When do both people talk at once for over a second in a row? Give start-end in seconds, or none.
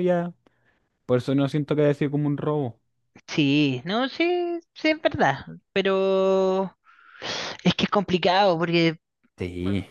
none